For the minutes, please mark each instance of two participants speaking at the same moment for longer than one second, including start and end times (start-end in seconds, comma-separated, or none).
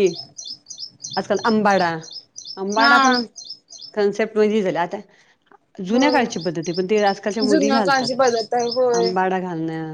none